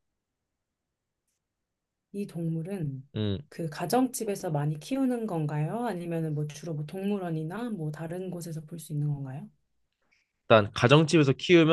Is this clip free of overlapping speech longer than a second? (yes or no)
yes